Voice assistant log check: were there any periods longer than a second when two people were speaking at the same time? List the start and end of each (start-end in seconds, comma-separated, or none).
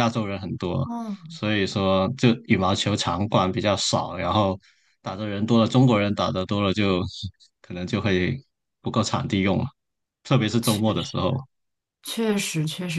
none